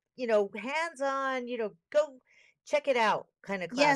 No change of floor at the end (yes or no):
no